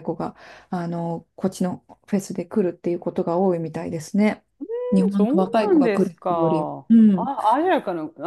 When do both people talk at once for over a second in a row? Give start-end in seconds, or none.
5.1-7.3